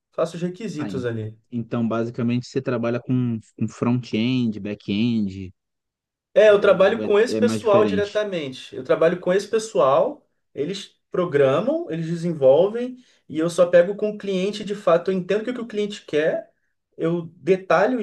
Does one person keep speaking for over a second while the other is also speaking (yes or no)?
yes